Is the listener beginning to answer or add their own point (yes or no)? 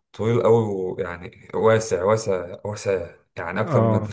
yes